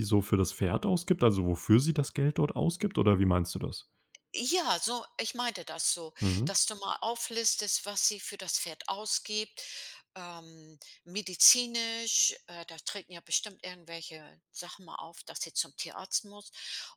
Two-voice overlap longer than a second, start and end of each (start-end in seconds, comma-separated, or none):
none